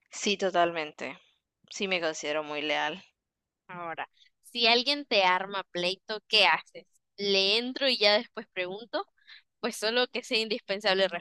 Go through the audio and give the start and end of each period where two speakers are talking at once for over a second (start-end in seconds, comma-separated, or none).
none